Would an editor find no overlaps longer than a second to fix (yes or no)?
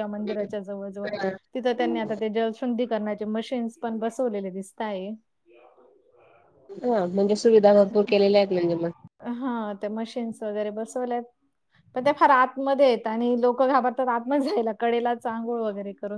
yes